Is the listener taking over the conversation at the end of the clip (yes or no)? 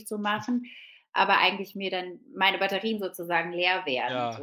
yes